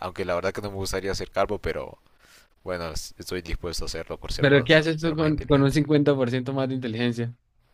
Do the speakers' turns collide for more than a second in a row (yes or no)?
yes